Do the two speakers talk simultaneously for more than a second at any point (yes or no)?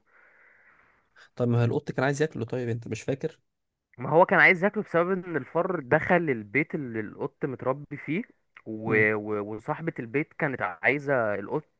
no